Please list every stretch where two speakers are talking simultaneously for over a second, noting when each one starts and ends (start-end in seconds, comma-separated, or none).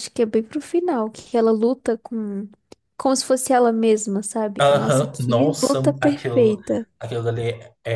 4.6-6.6